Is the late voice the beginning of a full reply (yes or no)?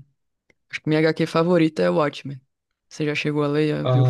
yes